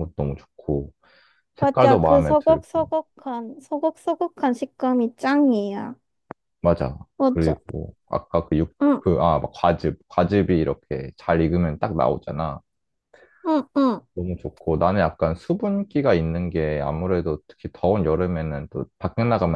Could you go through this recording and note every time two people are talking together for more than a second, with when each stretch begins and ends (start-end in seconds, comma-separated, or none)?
1.6-2.9